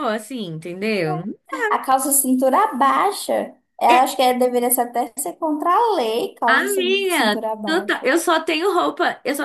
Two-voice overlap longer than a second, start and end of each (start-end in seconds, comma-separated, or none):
6.5-8.1